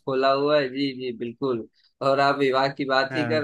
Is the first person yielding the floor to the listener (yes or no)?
no